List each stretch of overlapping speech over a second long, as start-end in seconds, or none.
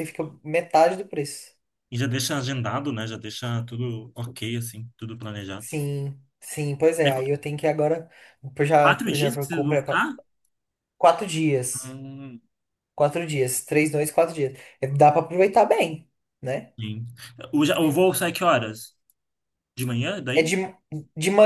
8.8-10.1